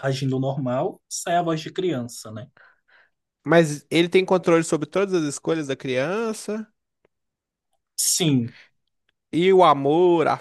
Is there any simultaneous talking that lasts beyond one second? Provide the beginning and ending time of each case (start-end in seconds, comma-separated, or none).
none